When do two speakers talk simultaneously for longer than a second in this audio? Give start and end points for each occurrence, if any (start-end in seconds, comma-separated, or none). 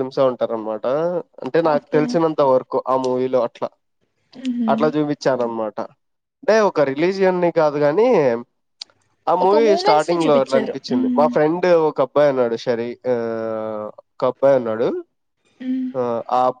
9.4-11.3